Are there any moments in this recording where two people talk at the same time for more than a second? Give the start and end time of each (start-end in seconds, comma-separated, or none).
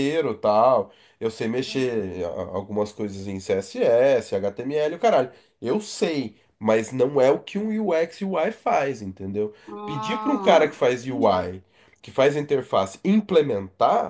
9.7-11.6